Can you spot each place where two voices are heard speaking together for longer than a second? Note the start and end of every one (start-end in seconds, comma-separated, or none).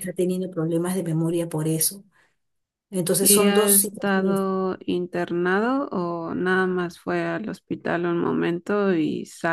3.2-4.4